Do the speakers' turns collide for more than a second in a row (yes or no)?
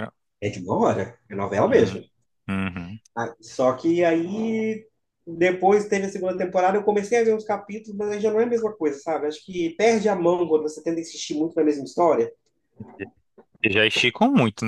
no